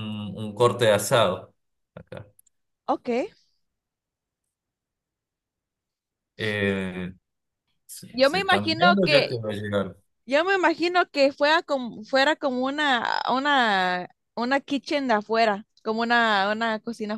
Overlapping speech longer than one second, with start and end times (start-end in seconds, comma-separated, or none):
8.1-9.4